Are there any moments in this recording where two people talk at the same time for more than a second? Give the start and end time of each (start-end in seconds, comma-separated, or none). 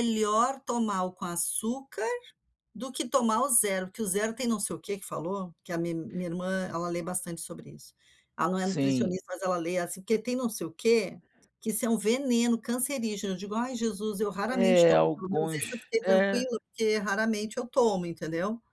14.5-16.5